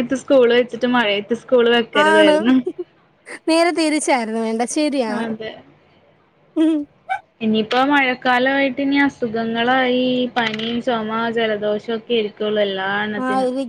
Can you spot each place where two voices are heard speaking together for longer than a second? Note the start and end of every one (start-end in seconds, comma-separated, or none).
none